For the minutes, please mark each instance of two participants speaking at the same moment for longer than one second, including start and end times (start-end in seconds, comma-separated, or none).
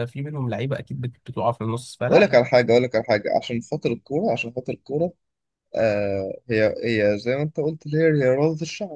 none